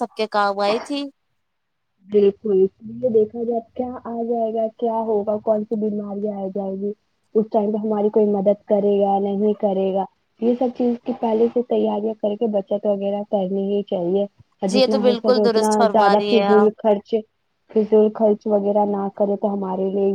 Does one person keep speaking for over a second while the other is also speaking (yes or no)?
yes